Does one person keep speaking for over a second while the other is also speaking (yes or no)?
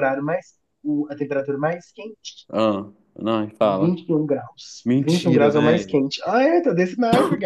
yes